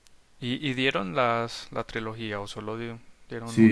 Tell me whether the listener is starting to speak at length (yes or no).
yes